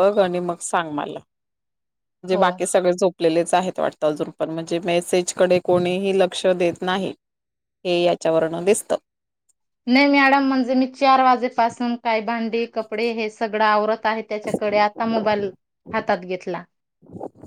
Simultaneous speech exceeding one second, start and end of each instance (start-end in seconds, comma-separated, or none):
none